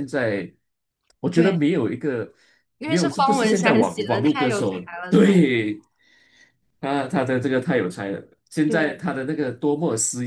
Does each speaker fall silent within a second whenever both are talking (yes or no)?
no